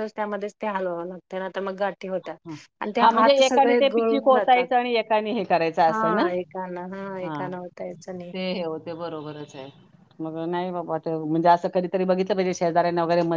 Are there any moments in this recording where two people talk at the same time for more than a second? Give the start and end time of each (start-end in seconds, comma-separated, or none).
3.0-4.7